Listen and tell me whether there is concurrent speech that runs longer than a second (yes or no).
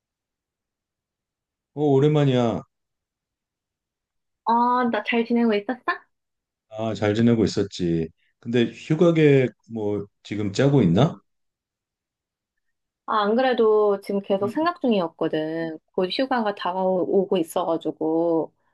no